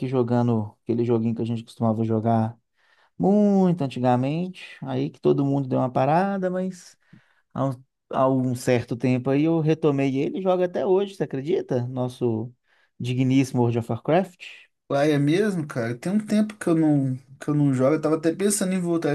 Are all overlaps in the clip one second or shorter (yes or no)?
yes